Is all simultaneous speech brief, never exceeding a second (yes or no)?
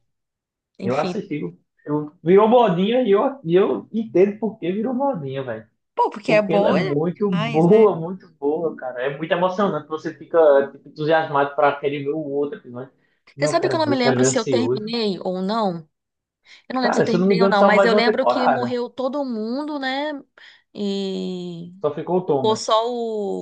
no